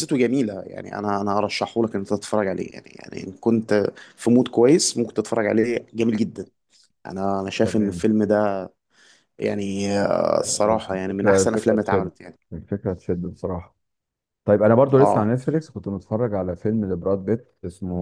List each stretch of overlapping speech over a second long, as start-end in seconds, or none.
10.9-12.1